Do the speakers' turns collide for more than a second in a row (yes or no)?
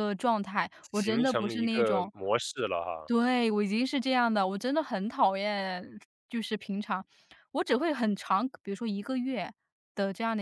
yes